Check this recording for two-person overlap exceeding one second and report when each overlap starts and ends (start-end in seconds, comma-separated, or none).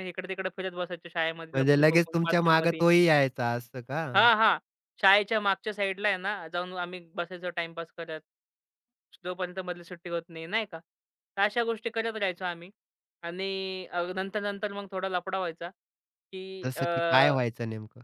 1.5-2.8